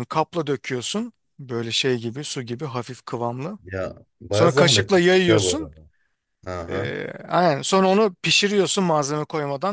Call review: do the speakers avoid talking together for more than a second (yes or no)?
no